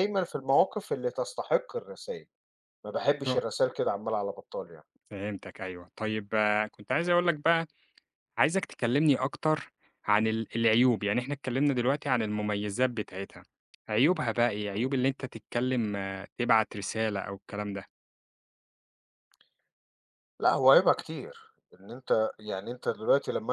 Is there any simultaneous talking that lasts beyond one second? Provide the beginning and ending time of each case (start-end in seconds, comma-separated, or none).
none